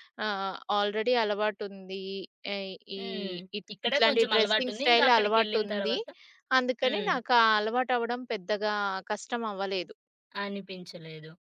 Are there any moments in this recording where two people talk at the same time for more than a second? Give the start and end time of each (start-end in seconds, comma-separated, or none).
3.7-6.0